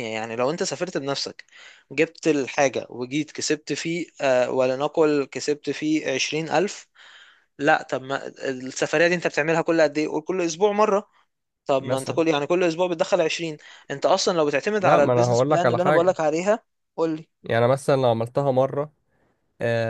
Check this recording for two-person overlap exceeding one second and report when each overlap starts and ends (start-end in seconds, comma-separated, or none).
14.8-16.2